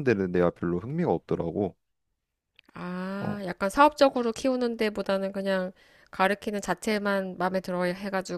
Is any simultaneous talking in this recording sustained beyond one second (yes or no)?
no